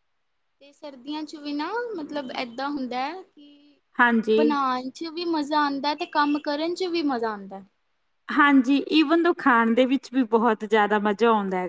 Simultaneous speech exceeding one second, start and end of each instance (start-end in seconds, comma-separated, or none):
none